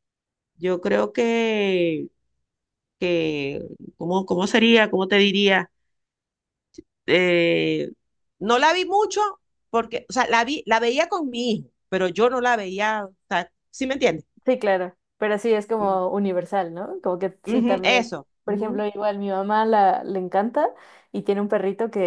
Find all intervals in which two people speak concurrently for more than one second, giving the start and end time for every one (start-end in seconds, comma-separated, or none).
17.5-18.8